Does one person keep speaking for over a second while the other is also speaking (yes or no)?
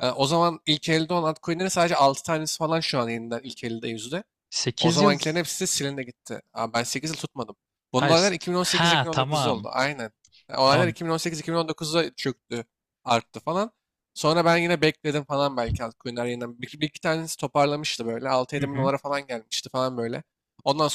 yes